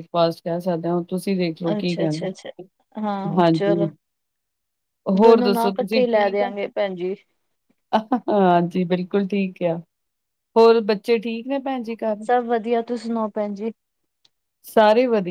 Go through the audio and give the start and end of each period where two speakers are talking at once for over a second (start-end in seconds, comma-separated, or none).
5.2-6.5